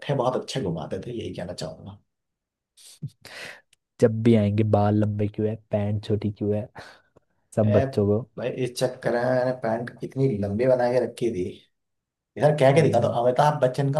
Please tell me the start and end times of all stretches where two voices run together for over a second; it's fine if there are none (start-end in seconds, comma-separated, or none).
none